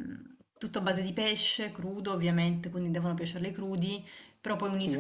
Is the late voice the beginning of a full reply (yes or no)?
no